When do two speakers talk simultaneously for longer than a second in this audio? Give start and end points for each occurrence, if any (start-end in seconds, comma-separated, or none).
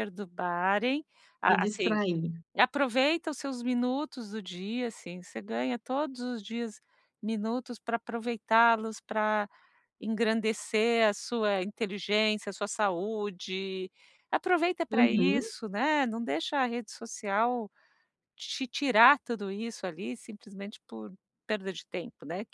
none